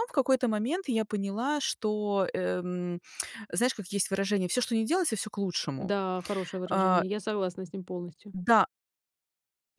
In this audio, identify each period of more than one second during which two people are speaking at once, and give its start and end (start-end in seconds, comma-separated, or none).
none